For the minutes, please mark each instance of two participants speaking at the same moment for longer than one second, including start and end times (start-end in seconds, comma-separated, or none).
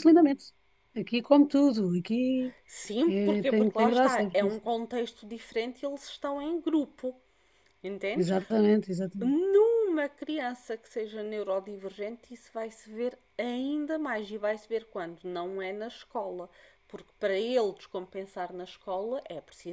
3.1-4.7